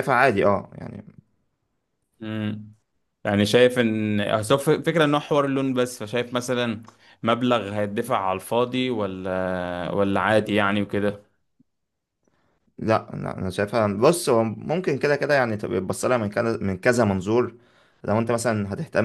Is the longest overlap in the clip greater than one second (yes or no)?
no